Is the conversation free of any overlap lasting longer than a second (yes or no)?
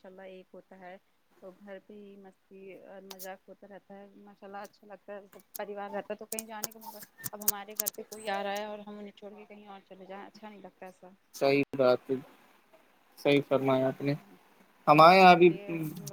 yes